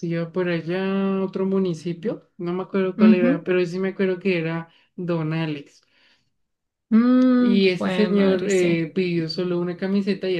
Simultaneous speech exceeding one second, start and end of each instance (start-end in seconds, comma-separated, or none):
7.4-8.8